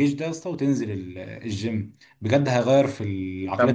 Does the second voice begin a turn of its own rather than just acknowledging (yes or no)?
yes